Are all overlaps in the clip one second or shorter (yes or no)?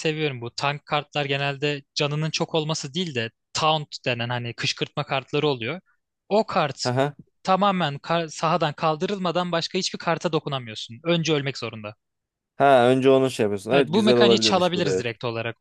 no